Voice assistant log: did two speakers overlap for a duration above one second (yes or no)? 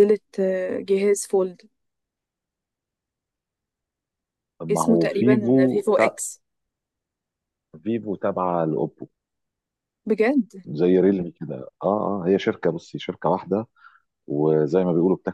yes